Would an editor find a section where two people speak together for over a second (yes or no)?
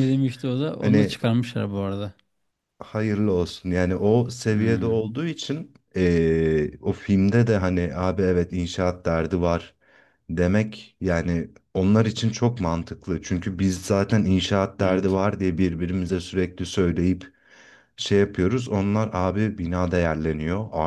no